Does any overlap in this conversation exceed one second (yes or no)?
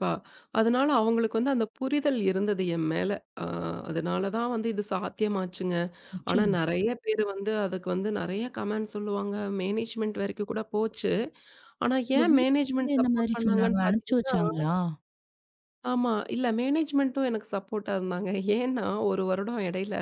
yes